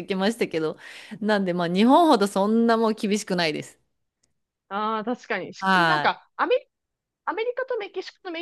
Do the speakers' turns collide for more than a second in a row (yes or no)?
no